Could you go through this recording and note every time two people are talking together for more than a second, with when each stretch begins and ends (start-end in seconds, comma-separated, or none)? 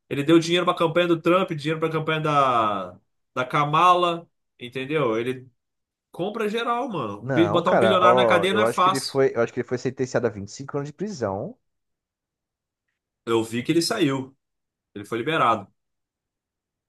7.2-9.2